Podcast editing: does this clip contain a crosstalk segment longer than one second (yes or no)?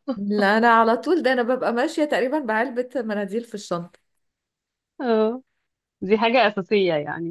no